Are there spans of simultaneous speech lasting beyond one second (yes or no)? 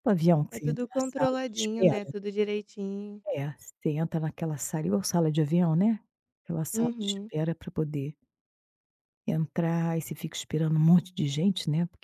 yes